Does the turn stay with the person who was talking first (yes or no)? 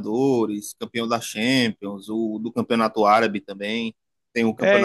yes